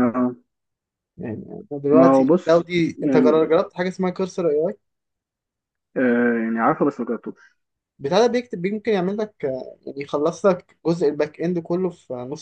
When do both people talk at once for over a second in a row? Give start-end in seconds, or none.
1.9-3.5